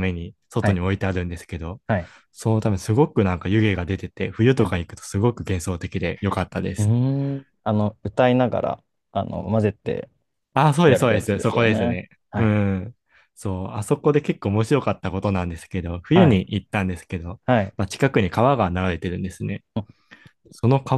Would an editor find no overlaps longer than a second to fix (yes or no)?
no